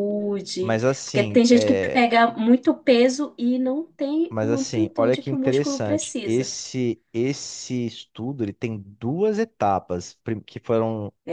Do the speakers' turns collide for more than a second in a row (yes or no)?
yes